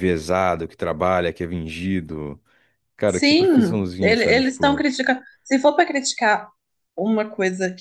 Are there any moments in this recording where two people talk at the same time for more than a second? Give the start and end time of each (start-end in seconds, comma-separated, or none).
3.1-4.8